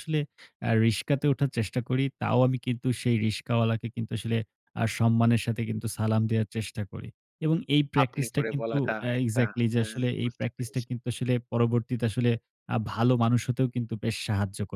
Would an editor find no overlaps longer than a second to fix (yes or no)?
no